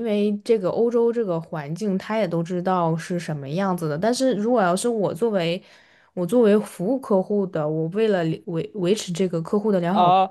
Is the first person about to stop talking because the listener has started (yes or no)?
yes